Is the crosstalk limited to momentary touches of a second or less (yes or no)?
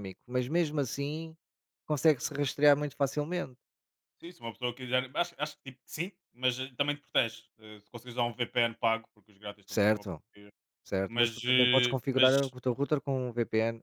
no